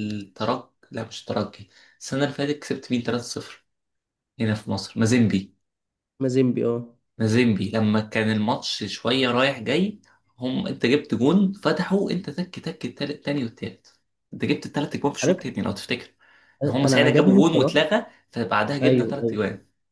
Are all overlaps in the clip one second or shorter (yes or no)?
no